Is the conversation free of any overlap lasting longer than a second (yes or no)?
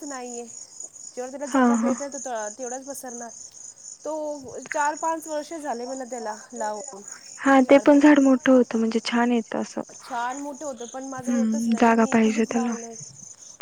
no